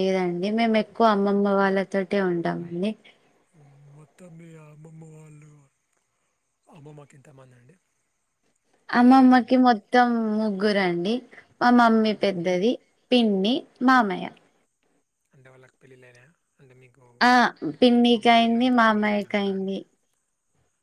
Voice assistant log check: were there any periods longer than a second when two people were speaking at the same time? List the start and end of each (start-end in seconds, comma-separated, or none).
18.1-19.7